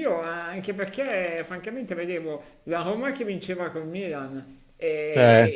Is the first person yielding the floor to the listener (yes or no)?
no